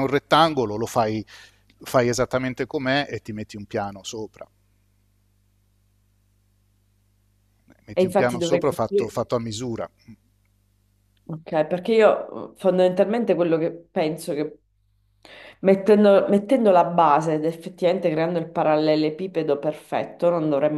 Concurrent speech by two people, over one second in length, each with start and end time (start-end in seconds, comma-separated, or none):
7.9-9.1